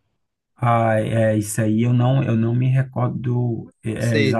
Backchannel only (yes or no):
yes